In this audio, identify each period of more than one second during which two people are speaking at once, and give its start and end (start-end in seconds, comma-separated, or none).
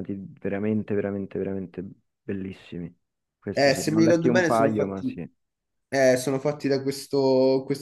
3.5-5.2